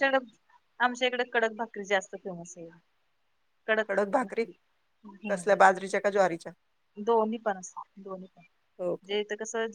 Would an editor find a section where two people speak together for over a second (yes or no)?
no